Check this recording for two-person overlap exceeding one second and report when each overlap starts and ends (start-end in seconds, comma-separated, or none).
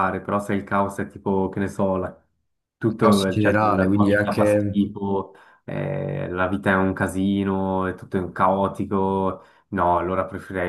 3.0-4.8